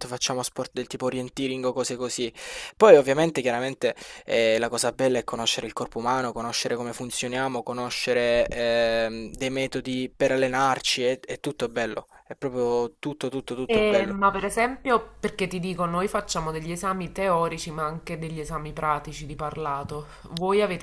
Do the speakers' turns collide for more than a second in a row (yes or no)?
no